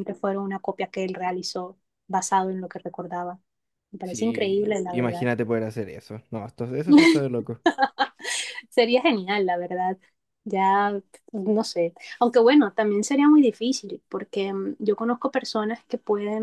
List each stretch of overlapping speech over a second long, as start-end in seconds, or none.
4.0-5.3